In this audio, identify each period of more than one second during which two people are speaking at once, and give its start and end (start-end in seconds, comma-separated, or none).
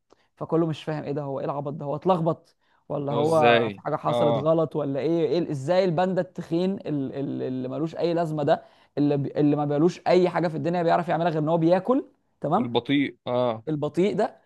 3.1-4.5